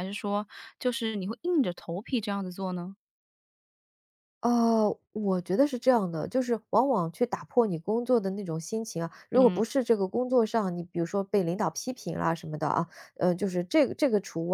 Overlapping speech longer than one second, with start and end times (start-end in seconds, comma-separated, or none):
none